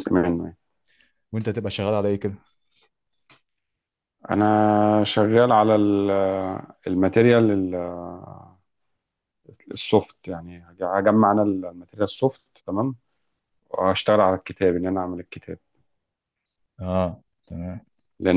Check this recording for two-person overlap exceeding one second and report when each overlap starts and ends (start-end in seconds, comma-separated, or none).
none